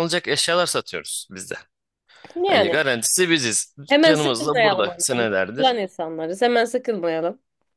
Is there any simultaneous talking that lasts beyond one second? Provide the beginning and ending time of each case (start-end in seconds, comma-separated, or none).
3.9-5.8